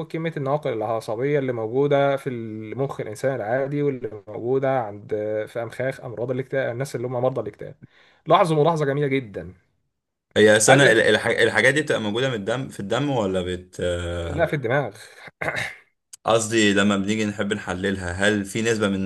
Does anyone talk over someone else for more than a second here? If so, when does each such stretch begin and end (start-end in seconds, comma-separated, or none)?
none